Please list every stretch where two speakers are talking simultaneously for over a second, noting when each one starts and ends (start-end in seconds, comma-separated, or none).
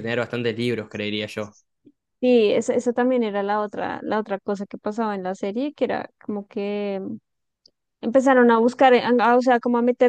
none